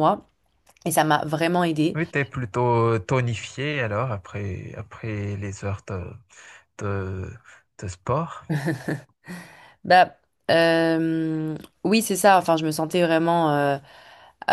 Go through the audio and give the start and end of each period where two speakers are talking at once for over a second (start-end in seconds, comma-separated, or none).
none